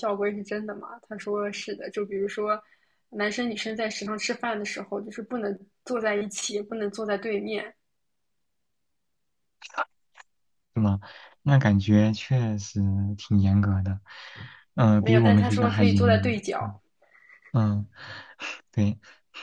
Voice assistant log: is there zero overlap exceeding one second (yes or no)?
no